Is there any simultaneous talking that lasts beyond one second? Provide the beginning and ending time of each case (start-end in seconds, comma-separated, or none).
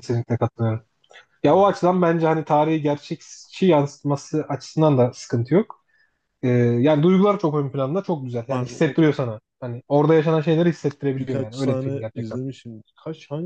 11.2-12.4